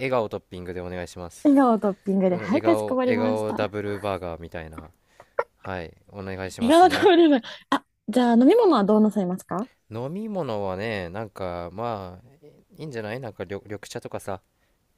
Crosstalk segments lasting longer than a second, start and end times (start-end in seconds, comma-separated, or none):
2.3-3.7